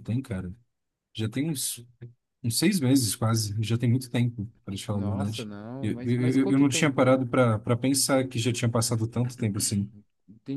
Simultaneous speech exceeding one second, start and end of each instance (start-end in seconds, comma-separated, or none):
4.9-7.2